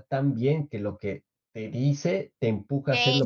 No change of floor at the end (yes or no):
no